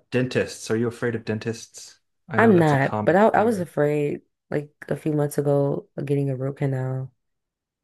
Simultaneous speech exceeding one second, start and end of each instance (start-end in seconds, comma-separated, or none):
2.4-3.7